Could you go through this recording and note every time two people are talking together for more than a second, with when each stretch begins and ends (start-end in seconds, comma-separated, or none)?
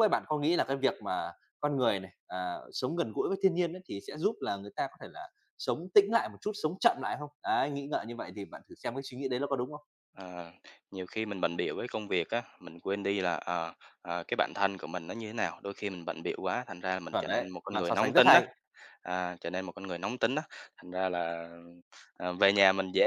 17.1-18.4